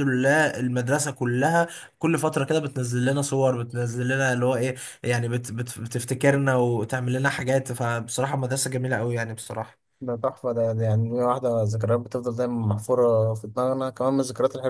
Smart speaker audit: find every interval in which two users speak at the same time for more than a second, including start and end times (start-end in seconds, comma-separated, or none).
none